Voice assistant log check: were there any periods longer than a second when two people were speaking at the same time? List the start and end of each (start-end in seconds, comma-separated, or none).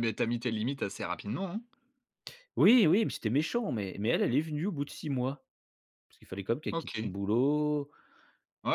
none